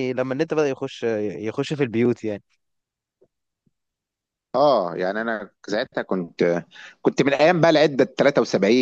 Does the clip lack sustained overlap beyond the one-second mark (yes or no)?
yes